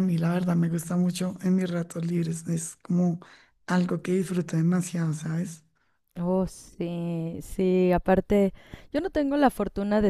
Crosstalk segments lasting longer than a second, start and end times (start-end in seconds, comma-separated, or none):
none